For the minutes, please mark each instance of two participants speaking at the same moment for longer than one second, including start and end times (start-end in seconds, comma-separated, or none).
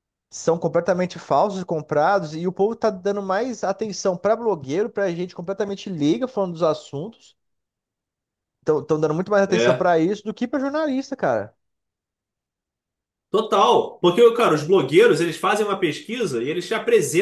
none